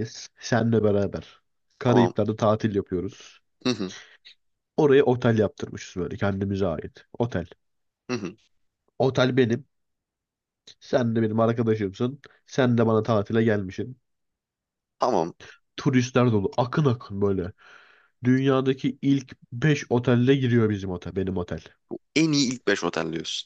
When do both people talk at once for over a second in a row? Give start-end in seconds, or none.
none